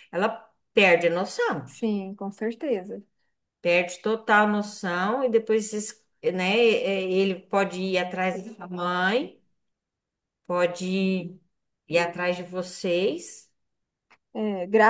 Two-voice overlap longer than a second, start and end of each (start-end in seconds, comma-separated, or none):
none